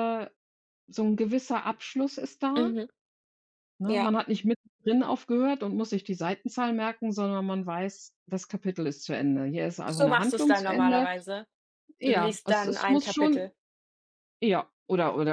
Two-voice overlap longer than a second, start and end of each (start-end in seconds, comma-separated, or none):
9.8-11.1, 12.1-13.5